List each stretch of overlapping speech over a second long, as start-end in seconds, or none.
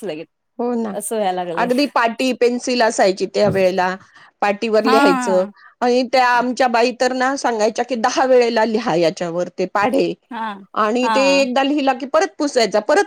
none